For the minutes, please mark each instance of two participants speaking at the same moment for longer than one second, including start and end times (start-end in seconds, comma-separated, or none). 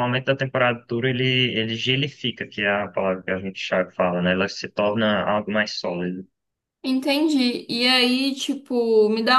none